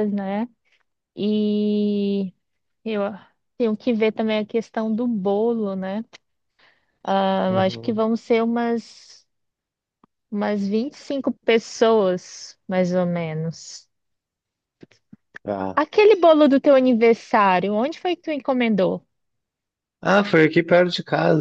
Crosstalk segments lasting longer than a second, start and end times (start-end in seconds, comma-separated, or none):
none